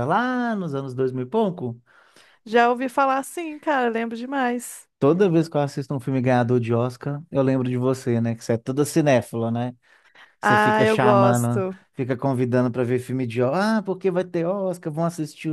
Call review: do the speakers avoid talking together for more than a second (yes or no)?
no